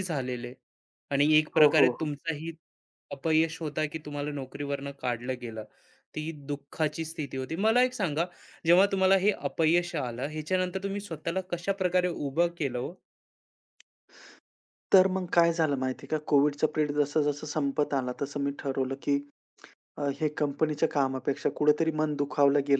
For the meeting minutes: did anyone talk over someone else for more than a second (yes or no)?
no